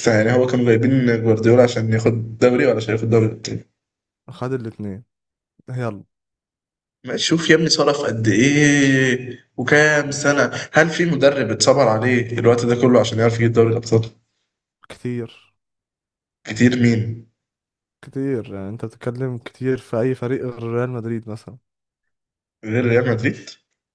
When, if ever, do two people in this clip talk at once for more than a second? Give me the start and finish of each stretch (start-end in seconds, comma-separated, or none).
none